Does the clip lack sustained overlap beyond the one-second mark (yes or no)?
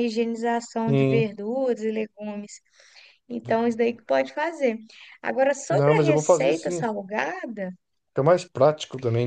no